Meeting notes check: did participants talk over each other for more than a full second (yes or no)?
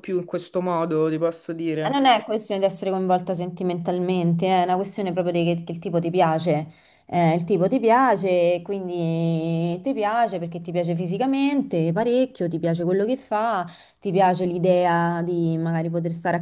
no